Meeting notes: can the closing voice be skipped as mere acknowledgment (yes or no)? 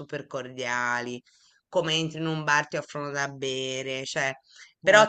yes